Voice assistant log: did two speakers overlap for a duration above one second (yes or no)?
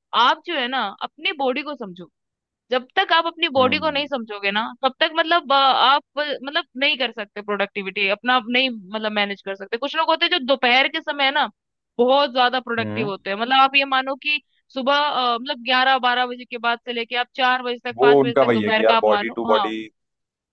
yes